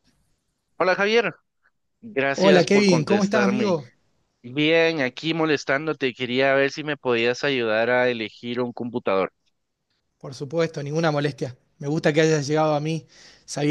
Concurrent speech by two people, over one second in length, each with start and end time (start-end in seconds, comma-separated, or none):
2.3-3.7